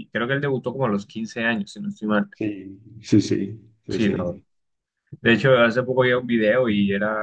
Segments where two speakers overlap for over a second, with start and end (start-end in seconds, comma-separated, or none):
none